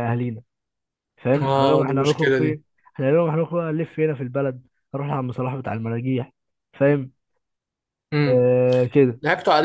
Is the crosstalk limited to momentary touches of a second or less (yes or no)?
no